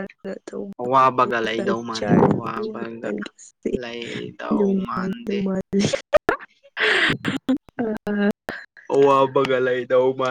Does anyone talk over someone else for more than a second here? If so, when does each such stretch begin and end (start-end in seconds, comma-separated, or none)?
1.6-3.1